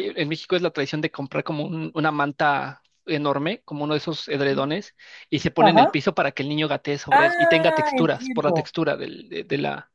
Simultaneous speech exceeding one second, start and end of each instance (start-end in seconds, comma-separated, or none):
7.1-8.7